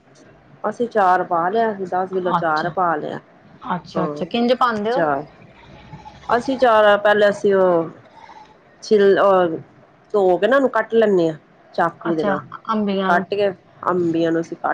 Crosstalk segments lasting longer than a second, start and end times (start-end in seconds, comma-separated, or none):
none